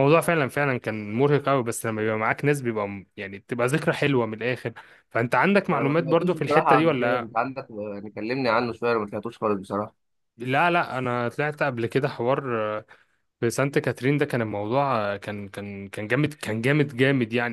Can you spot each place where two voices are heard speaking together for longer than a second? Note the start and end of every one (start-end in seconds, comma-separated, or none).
5.7-7.3